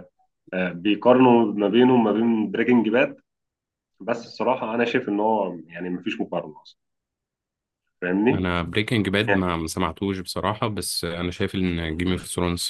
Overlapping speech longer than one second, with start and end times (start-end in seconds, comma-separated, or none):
none